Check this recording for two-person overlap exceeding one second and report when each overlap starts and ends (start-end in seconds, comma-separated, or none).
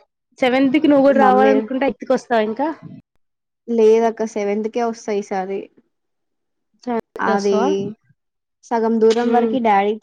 none